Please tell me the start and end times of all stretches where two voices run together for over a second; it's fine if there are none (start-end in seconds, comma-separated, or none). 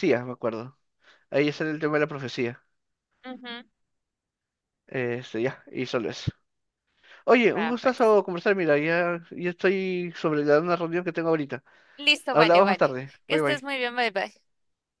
12.3-13.7